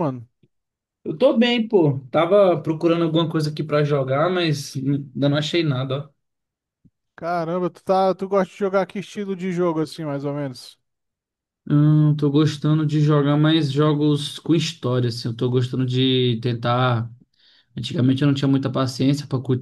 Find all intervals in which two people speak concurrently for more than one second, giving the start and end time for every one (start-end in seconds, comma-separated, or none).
none